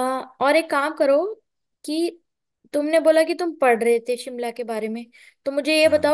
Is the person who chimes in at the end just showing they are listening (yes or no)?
yes